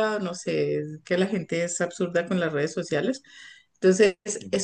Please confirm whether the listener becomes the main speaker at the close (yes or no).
no